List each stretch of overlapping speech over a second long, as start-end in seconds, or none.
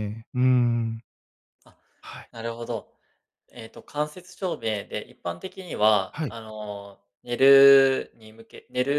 none